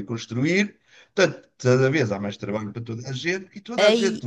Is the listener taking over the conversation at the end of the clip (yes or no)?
no